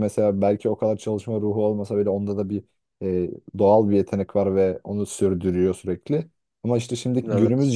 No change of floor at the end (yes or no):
yes